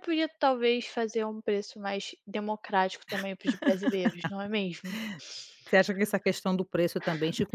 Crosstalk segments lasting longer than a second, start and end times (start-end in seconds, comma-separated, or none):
none